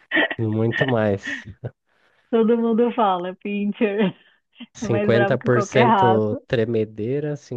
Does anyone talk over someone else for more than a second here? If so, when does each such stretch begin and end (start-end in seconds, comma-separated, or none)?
4.8-6.4